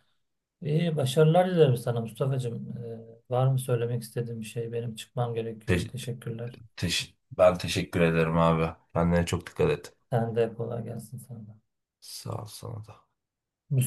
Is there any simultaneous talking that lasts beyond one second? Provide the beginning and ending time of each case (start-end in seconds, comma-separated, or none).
none